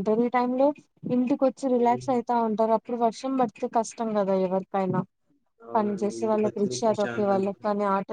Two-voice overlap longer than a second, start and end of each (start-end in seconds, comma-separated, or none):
5.8-7.6